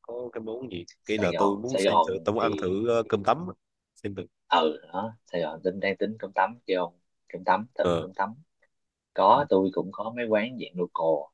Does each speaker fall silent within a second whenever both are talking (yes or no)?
no